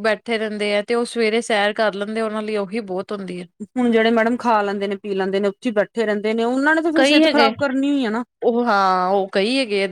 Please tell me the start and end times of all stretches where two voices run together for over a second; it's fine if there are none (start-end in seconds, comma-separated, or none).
none